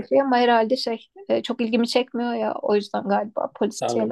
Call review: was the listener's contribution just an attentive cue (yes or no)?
no